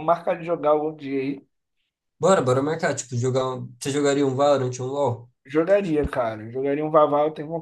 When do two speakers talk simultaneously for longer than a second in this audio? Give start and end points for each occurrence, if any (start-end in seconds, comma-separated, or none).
none